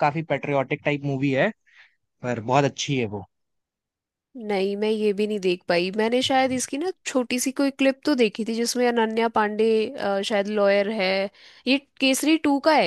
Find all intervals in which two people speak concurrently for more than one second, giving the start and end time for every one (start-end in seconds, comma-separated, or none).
none